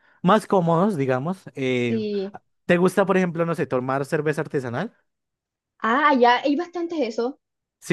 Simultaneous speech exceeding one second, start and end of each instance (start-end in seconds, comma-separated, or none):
none